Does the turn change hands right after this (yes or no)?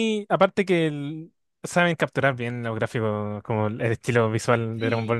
yes